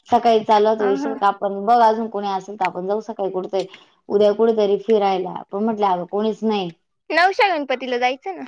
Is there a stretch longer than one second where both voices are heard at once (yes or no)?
no